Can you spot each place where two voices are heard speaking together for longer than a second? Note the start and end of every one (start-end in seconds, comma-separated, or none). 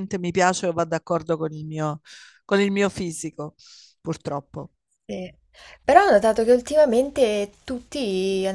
none